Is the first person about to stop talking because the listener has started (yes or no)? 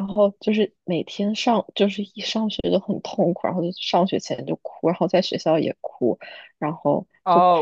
yes